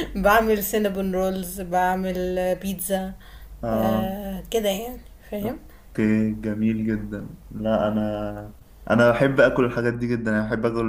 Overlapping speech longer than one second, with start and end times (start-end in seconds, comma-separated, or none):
none